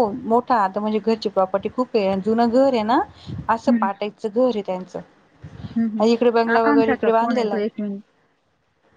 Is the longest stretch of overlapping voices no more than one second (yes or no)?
no